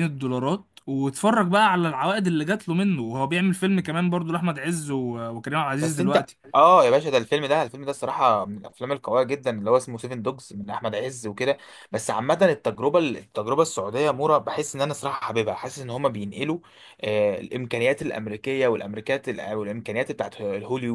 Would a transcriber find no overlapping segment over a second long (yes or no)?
yes